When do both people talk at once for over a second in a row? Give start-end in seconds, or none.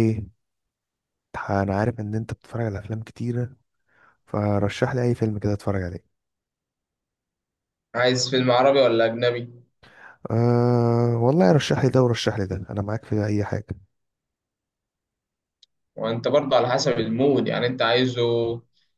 none